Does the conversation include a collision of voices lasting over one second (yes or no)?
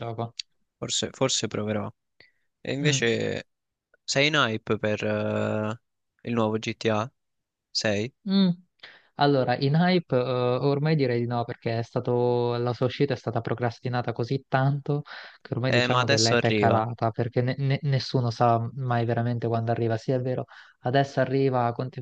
yes